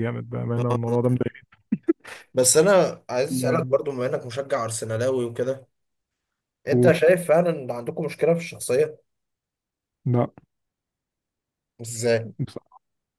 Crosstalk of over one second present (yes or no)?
no